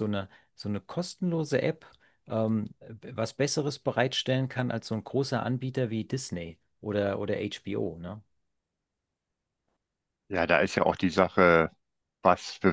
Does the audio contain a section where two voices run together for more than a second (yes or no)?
no